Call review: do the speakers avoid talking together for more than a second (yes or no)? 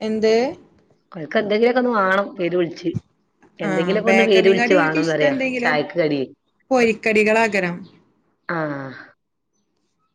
no